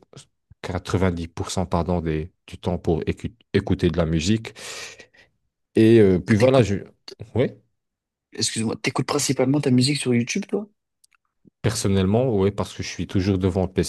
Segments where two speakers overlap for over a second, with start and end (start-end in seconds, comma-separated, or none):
none